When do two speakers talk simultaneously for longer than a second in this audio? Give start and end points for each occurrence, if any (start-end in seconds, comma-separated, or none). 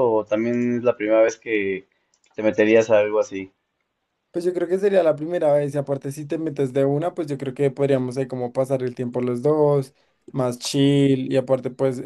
none